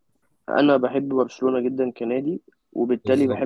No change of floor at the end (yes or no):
yes